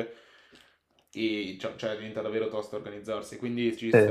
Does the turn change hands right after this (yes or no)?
yes